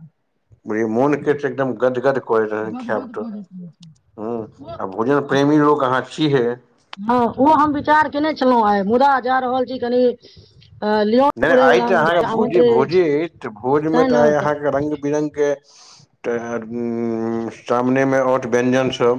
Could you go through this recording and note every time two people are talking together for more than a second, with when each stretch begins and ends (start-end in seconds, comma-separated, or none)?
11.4-13.0